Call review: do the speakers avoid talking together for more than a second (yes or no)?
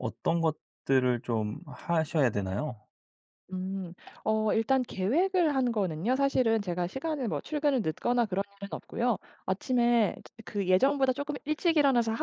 yes